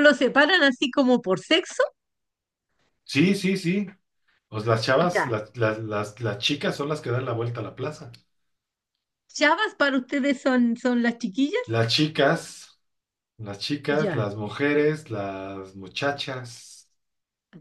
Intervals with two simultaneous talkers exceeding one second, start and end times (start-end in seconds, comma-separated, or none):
none